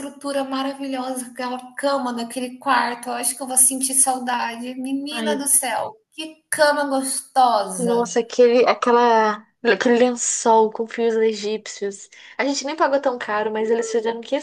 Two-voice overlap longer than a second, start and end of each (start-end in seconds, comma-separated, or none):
none